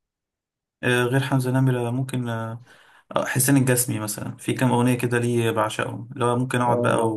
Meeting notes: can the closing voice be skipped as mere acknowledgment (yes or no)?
yes